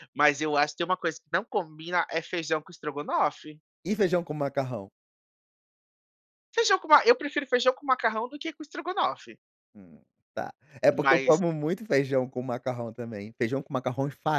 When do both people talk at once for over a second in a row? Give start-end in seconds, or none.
none